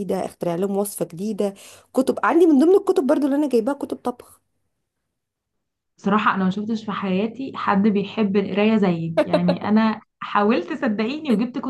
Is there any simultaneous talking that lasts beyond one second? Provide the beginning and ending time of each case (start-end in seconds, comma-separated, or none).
none